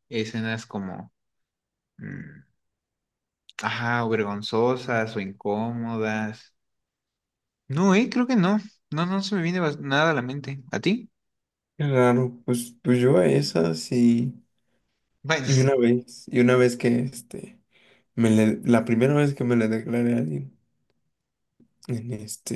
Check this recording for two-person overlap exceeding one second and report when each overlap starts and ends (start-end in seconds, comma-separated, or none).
none